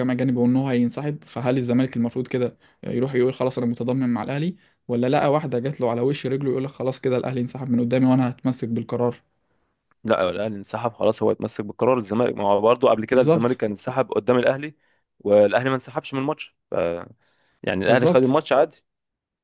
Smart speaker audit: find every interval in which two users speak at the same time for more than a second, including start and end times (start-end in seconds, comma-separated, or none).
none